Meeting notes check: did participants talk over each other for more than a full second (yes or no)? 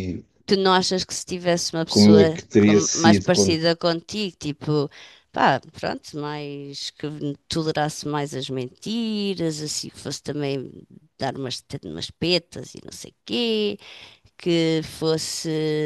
yes